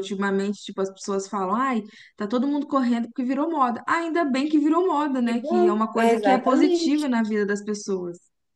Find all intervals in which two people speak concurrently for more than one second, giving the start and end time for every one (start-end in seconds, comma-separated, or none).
5.3-7.1